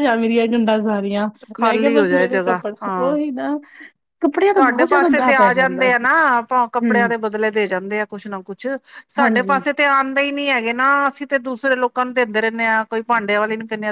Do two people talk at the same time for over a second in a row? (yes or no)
yes